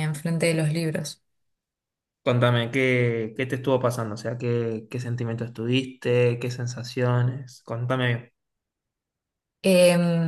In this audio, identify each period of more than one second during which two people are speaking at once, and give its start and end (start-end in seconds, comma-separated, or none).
none